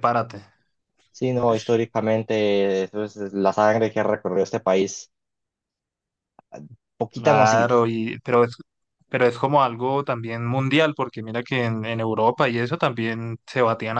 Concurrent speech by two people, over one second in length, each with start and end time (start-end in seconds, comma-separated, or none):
none